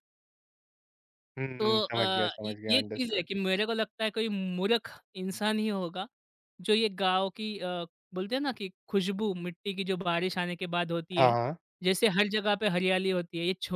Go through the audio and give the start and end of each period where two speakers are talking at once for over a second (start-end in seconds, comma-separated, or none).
1.6-3.3